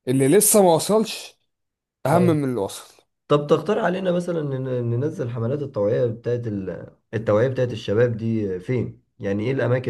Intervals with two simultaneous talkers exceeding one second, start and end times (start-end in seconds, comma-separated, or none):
none